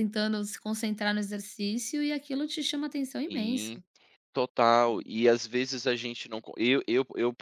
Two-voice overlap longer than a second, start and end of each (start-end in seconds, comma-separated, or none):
none